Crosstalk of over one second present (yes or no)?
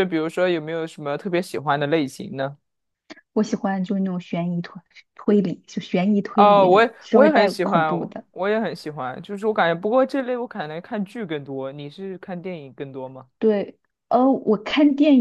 yes